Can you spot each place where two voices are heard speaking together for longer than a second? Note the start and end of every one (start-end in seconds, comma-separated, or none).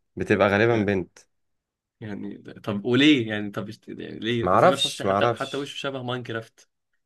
4.4-5.7